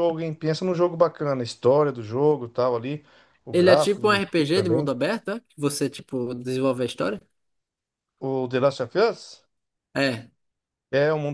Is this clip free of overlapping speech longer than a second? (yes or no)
no